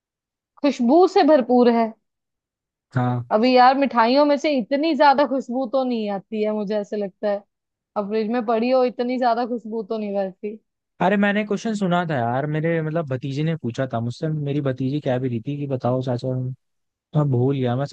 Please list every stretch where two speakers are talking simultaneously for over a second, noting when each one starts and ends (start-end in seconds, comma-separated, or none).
none